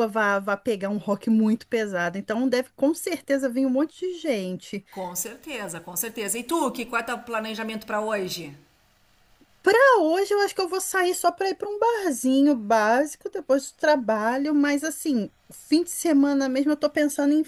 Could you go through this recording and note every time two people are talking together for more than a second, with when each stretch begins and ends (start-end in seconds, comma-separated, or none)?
none